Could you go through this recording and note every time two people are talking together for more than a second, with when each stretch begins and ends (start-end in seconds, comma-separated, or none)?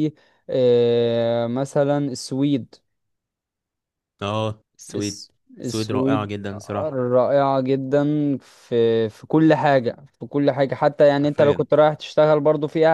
4.9-6.3